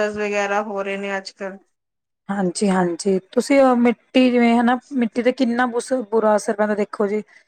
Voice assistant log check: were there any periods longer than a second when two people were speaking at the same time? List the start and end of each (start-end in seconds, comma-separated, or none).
none